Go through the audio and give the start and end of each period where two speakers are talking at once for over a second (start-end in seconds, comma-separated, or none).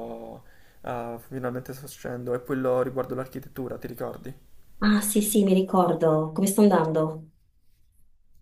none